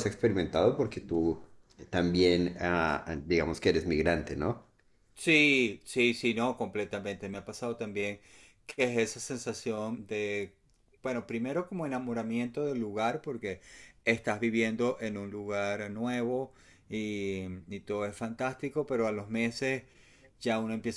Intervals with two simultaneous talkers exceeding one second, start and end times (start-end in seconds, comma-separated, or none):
none